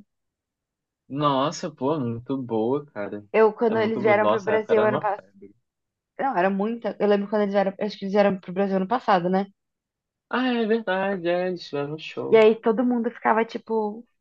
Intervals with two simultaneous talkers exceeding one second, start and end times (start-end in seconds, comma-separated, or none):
3.7-5.2